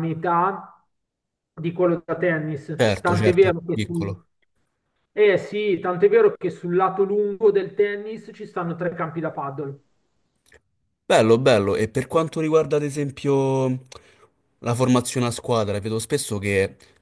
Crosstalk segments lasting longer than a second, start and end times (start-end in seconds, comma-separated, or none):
2.8-4.2